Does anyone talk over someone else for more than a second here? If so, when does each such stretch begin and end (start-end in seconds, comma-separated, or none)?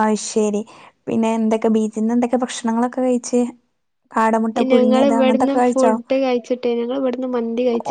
none